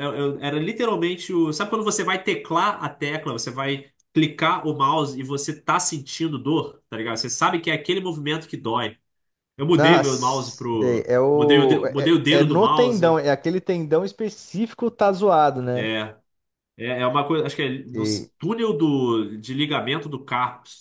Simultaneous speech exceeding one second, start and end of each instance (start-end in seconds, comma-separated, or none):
9.8-13.2